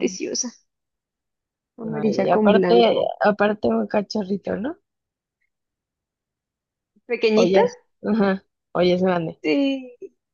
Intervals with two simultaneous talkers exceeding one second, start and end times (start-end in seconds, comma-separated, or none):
1.8-3.1